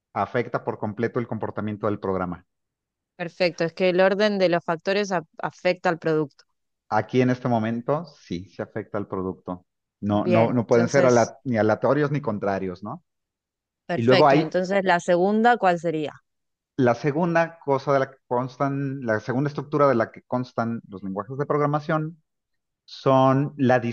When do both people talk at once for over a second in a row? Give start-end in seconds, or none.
10.1-11.3